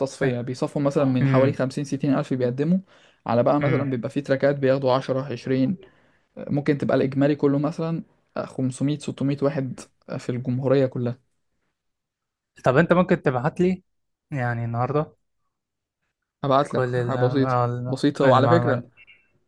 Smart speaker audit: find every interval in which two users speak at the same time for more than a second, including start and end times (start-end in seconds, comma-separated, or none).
16.7-18.8